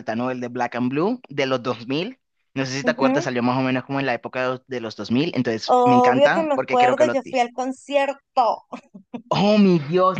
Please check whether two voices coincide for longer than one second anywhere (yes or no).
yes